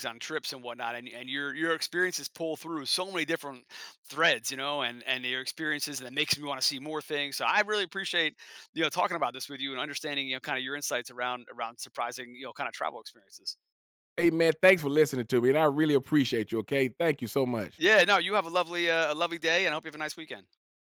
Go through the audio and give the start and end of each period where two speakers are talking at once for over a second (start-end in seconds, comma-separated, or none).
none